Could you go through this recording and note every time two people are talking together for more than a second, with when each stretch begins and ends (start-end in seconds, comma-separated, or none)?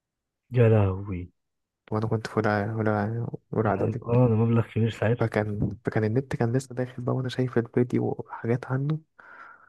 none